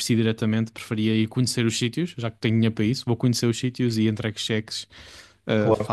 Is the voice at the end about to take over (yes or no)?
no